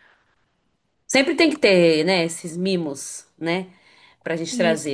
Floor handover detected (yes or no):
no